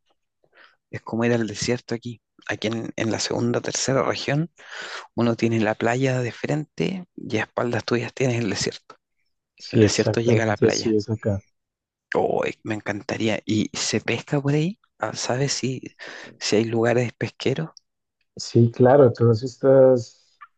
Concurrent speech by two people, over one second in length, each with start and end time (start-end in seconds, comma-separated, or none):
9.7-11.0